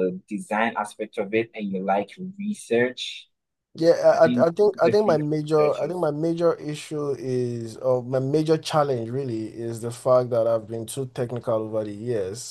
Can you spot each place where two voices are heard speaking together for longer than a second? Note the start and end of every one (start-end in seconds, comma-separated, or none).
4.1-6.1